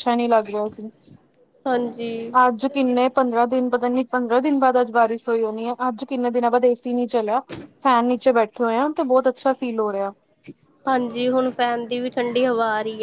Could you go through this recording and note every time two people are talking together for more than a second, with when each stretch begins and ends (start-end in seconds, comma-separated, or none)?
none